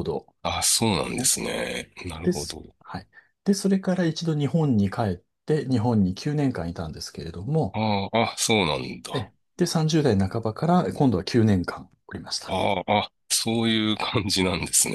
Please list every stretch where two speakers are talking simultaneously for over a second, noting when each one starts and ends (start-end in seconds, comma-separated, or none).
none